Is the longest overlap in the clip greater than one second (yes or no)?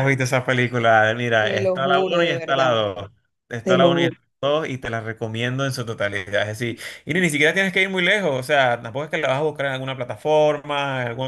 yes